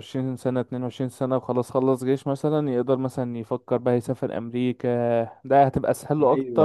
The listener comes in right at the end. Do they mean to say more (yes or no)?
yes